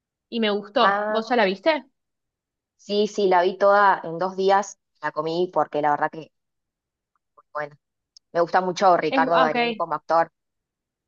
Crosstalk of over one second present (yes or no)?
no